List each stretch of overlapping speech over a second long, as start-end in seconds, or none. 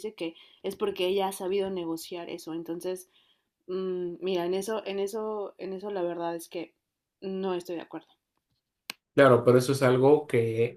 none